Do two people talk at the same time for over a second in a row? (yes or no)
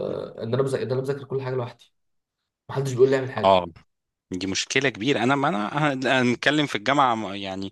no